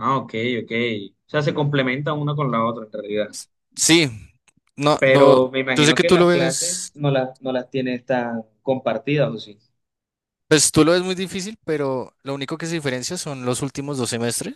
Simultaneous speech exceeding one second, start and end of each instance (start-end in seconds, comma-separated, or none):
5.0-6.9